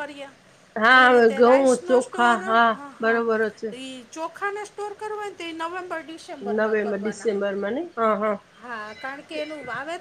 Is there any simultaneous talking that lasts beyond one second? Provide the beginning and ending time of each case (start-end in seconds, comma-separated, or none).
0.9-3.2